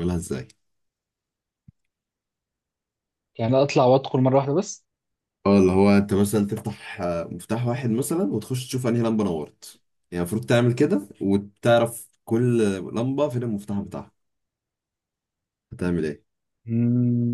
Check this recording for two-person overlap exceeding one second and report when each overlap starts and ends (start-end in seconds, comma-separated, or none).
none